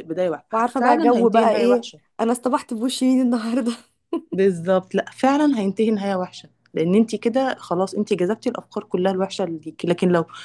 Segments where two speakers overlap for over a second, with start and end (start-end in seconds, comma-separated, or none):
0.5-2.0